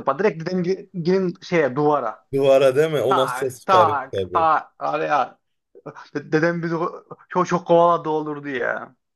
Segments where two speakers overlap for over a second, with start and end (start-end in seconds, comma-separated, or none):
3.1-4.5